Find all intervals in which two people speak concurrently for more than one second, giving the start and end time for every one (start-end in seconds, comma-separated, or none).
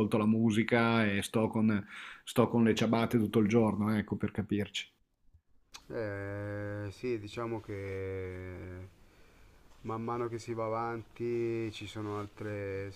none